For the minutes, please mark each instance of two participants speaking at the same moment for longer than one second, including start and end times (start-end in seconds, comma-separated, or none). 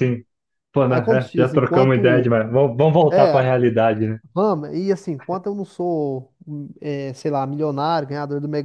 0.9-2.4